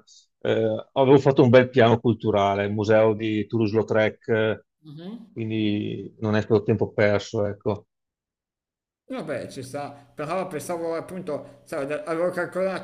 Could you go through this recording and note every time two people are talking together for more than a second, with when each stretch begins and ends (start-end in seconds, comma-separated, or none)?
none